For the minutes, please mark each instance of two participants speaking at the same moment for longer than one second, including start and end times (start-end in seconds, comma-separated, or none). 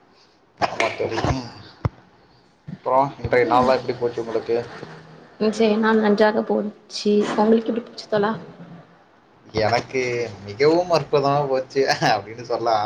none